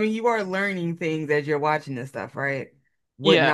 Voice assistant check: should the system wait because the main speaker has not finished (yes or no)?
yes